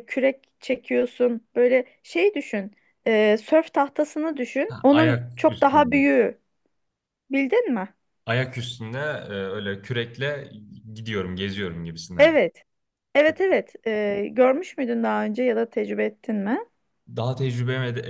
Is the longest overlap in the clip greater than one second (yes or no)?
yes